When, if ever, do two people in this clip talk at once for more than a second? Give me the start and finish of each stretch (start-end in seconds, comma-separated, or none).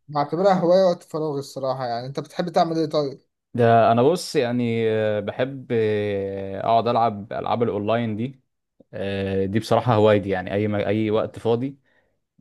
none